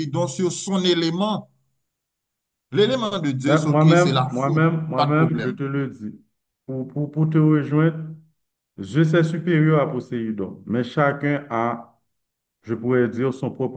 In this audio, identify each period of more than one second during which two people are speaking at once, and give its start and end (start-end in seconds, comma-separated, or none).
3.5-5.5